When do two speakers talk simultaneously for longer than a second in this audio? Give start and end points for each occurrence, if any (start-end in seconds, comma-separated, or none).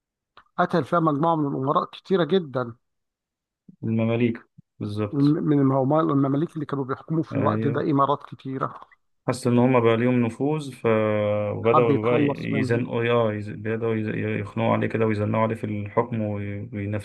11.6-12.8